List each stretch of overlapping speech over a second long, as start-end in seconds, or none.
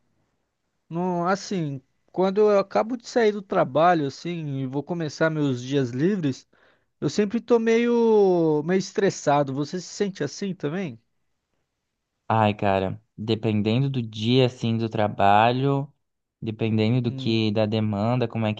none